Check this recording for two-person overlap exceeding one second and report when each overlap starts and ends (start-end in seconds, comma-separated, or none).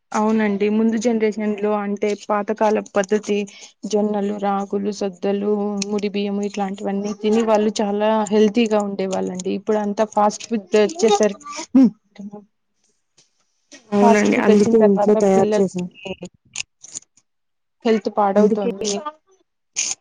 14.0-15.6